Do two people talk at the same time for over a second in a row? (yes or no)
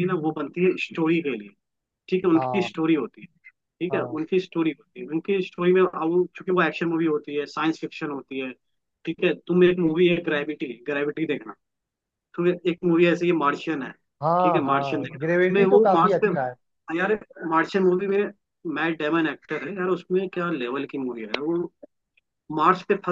yes